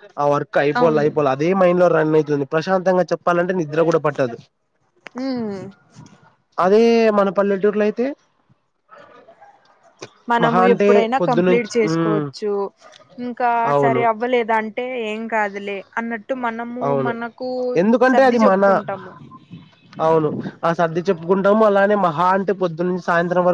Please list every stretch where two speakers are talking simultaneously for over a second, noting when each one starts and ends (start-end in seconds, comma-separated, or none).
10.4-12.2